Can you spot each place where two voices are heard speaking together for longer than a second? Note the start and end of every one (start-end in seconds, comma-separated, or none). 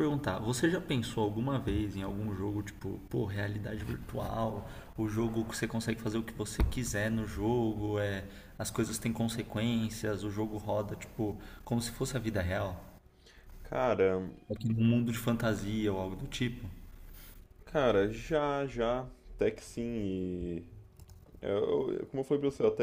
none